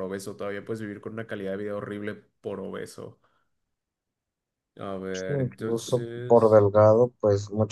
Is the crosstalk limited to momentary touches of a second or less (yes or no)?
no